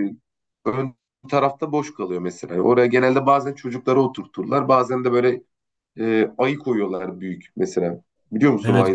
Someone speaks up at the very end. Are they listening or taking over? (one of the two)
taking over